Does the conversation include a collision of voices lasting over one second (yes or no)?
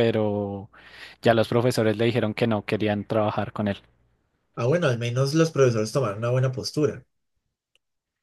no